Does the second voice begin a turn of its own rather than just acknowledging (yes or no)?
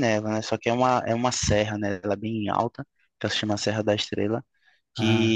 no